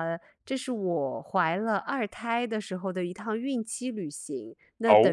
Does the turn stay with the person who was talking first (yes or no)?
yes